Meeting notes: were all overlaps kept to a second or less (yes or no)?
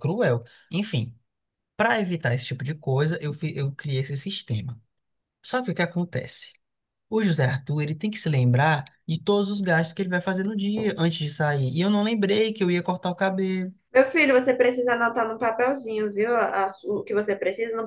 yes